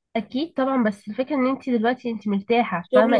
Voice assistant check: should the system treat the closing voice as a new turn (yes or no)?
yes